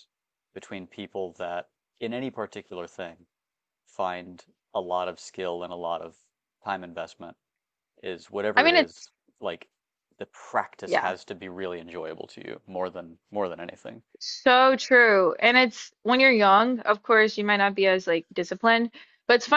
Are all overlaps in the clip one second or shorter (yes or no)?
yes